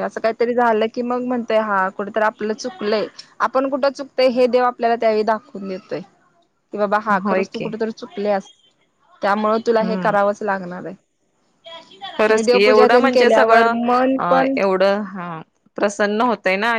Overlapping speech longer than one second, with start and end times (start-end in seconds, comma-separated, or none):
none